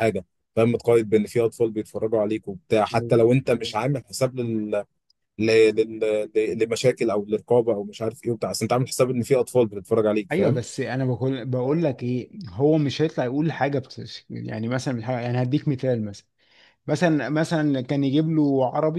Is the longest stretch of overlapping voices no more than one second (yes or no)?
yes